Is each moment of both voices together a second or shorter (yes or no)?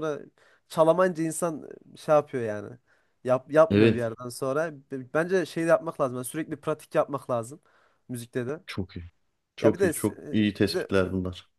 no